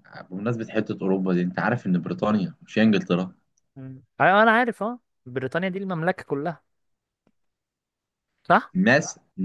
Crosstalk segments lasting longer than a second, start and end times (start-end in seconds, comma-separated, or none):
none